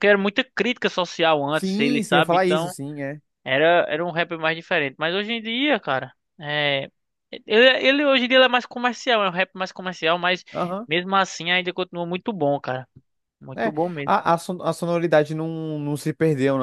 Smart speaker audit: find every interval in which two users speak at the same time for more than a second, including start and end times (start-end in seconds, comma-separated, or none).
1.5-2.8